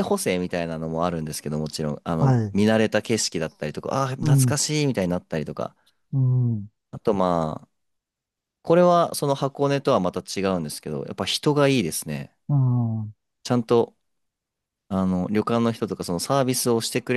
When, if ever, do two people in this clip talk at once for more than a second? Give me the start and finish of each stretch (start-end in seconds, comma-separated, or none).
none